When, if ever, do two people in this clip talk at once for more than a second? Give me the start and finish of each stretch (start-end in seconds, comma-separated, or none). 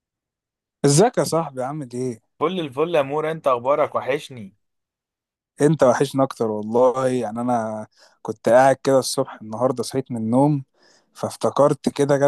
none